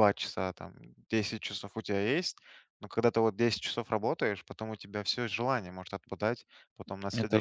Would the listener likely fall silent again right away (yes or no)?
yes